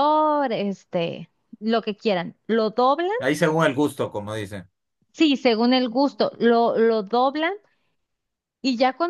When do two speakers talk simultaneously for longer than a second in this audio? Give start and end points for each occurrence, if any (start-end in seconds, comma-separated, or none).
none